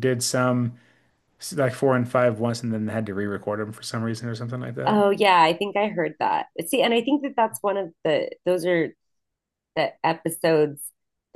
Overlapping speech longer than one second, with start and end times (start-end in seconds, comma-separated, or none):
none